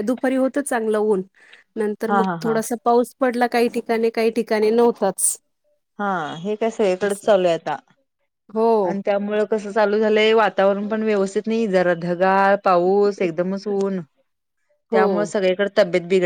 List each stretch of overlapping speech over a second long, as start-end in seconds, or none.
none